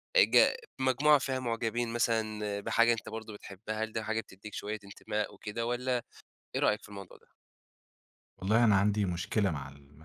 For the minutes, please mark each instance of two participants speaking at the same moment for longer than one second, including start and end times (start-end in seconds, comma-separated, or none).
none